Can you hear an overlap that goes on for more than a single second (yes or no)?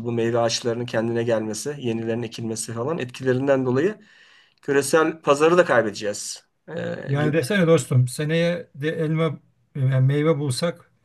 no